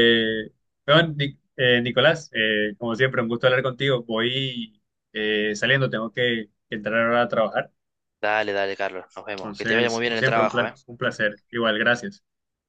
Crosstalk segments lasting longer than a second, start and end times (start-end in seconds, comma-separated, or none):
9.4-10.7